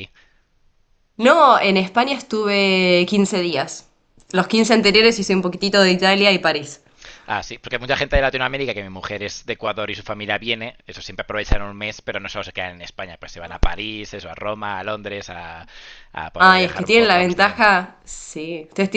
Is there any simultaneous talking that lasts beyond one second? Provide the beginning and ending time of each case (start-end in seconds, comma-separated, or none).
16.4-17.6